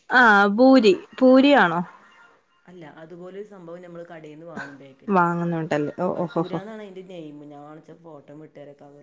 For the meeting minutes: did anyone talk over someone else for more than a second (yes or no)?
no